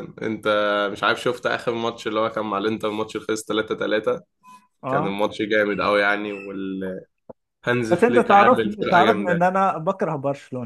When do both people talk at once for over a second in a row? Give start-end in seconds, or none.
8.1-9.6